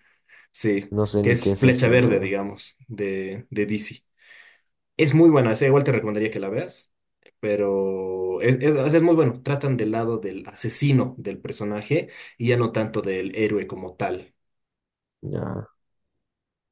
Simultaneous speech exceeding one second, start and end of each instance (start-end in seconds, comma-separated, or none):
0.9-2.4